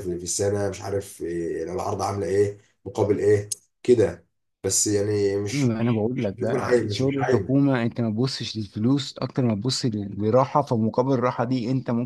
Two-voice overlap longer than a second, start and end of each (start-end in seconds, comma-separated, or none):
5.5-7.6